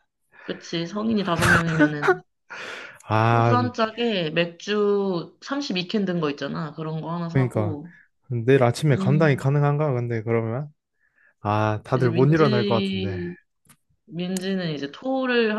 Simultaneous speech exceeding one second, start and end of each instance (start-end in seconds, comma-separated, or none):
11.9-13.2